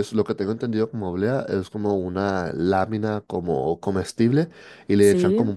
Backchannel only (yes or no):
yes